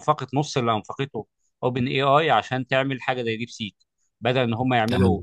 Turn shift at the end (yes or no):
no